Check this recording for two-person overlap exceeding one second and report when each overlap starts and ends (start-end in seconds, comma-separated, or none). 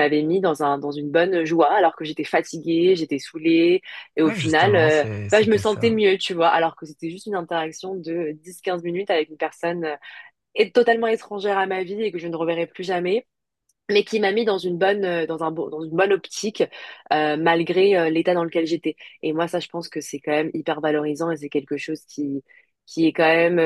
4.2-6.0